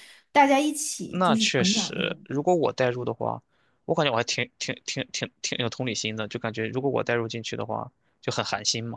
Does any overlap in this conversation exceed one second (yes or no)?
yes